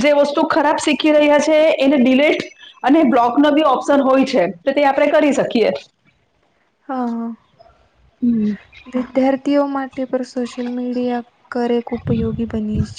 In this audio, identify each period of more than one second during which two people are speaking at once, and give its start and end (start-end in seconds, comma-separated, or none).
none